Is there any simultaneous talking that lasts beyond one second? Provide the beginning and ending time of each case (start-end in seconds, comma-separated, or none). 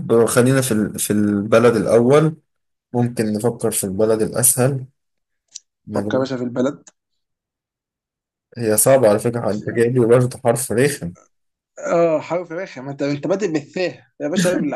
none